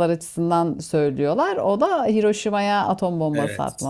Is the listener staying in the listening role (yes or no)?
no